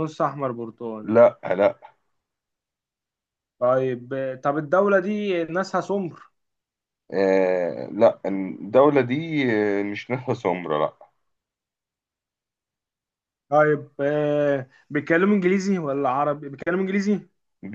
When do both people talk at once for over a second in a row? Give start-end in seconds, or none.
none